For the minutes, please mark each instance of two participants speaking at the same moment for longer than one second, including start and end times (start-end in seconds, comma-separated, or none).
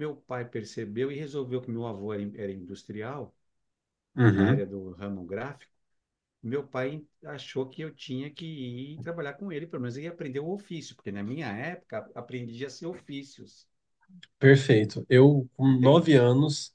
none